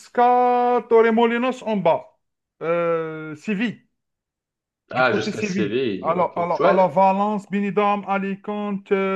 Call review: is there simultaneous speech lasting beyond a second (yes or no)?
yes